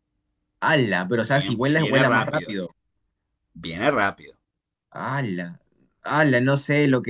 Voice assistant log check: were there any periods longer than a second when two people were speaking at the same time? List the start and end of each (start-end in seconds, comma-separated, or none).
1.2-2.6